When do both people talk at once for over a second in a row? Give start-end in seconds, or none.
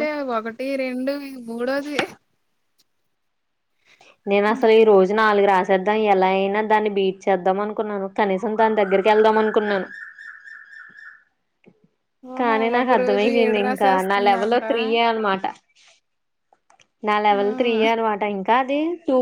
12.4-14.6